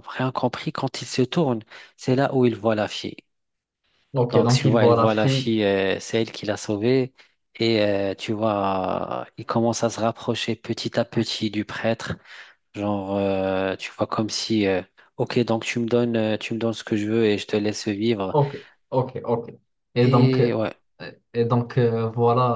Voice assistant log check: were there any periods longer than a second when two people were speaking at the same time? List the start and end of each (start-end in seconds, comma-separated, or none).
4.3-5.5